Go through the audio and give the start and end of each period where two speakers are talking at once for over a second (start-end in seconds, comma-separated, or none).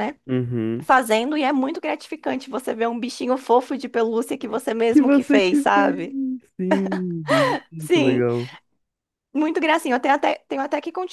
4.9-6.2